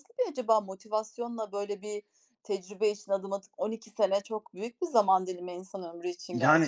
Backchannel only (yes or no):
no